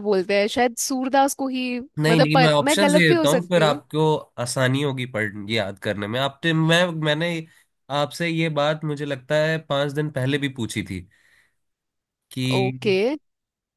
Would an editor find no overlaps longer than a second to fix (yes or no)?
no